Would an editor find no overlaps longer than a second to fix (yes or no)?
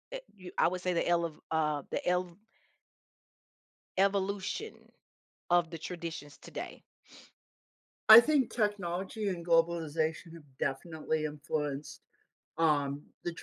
yes